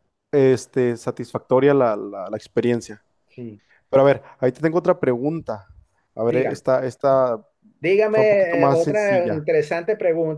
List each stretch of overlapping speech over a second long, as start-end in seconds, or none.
8.1-9.4